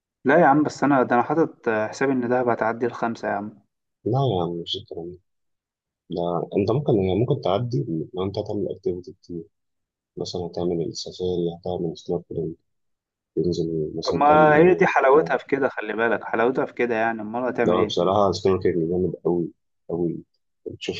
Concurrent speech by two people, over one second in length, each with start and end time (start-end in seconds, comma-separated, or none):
14.0-15.3